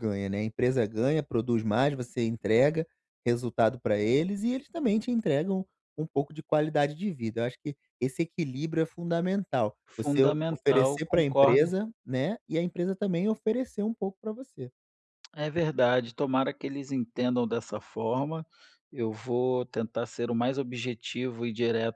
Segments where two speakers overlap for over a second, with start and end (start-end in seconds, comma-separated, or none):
10.0-11.7